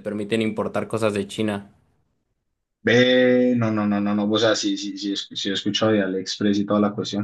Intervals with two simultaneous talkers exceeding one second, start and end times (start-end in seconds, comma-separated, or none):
none